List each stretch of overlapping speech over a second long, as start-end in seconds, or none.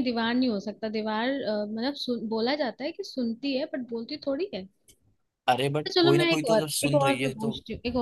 5.9-7.5